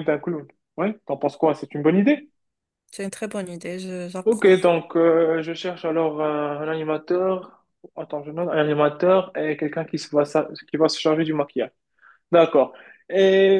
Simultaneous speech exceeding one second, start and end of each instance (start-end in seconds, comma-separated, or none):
none